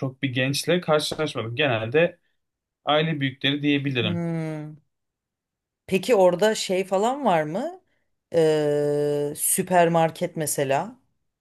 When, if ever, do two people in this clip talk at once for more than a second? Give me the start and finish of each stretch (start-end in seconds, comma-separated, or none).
none